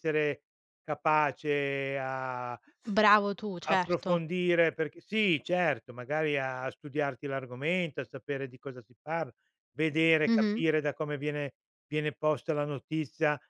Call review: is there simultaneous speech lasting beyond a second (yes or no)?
no